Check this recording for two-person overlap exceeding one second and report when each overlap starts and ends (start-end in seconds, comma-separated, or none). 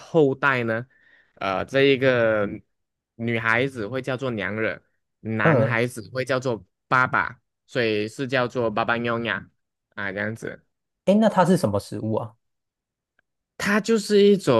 none